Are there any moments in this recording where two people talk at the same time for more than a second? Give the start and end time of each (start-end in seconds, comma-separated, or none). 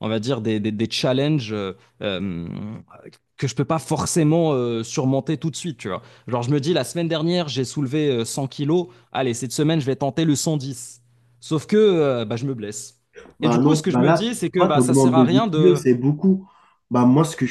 13.4-15.8